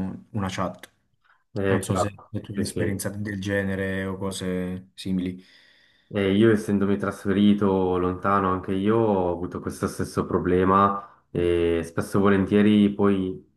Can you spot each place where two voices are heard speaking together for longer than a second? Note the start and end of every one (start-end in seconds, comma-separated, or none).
1.6-3.0